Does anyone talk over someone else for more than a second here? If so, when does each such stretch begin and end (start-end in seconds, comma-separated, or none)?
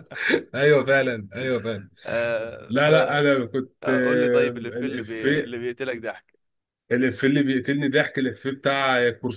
3.8-5.6